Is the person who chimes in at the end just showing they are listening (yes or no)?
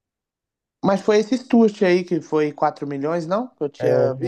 no